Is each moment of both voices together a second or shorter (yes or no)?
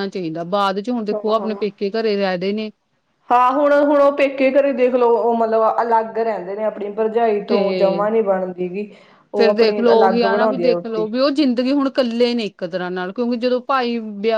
no